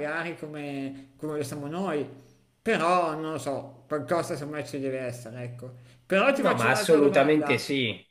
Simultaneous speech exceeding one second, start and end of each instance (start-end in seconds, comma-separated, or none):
6.3-7.6